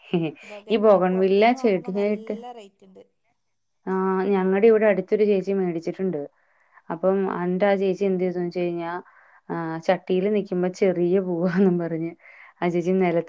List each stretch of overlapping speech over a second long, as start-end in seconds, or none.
0.7-2.4